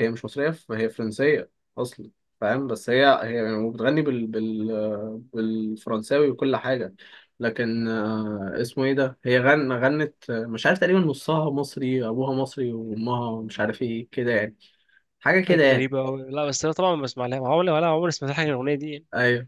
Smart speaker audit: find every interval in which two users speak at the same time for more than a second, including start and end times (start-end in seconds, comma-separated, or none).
none